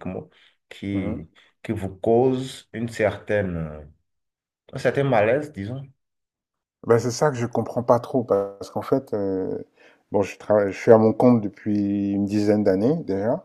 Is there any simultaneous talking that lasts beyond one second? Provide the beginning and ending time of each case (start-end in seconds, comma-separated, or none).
none